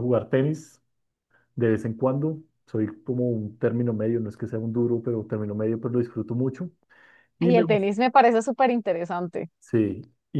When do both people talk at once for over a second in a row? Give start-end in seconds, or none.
none